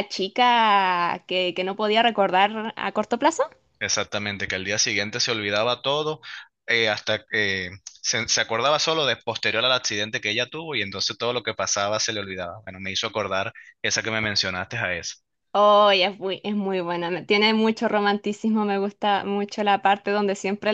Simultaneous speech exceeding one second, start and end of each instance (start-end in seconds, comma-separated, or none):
none